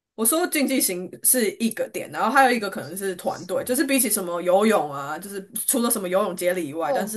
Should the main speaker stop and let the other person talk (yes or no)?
no